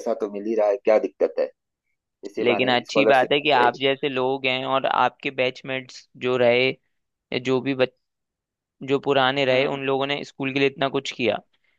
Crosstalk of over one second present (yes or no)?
yes